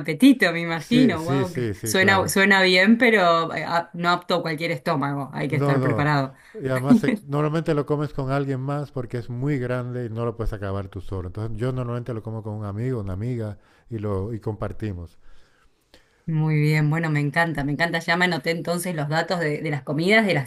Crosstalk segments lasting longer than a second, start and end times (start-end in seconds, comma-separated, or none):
0.7-2.3